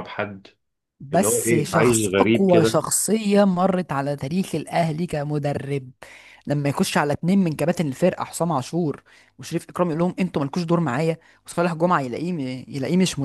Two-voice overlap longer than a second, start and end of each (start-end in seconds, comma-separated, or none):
1.1-2.8